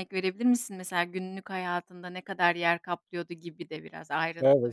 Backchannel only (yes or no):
no